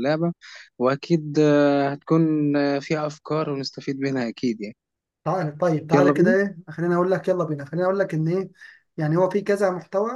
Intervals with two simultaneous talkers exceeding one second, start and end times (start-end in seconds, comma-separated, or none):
none